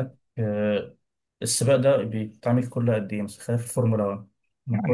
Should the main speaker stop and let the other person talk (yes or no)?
yes